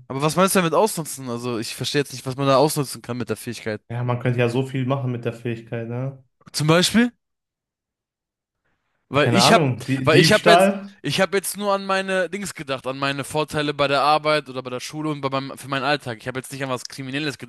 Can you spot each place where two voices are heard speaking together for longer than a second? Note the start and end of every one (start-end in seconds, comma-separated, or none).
9.2-10.9